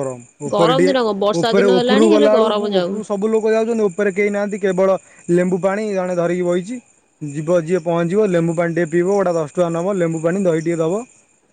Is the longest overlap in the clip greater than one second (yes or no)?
yes